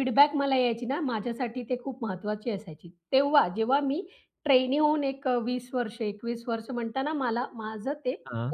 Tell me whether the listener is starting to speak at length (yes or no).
no